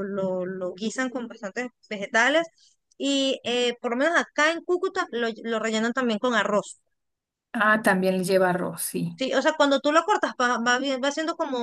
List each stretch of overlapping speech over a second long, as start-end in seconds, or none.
none